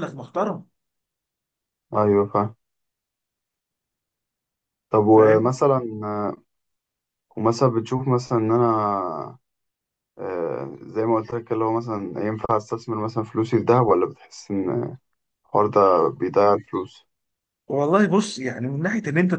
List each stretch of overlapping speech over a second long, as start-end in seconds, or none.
none